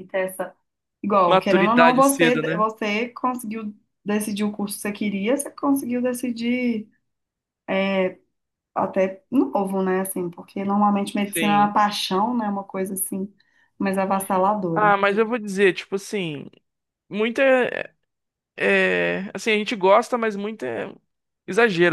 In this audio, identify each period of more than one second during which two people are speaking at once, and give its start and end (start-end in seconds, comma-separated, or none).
1.3-2.7